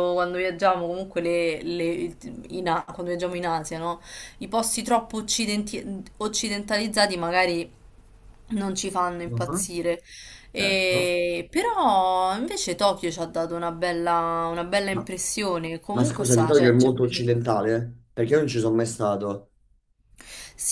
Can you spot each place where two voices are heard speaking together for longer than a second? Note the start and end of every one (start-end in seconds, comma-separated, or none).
15.9-17.3